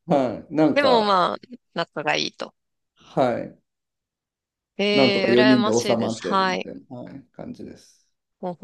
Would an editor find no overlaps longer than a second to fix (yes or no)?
no